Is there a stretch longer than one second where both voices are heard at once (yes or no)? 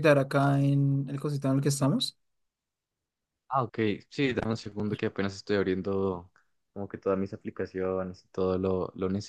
no